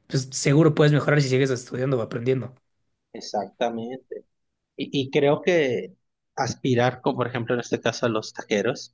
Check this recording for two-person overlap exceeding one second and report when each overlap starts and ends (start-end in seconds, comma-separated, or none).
none